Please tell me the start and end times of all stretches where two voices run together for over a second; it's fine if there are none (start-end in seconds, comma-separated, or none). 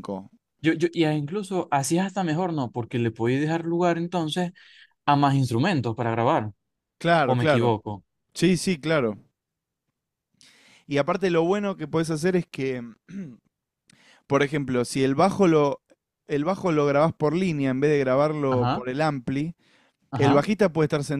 none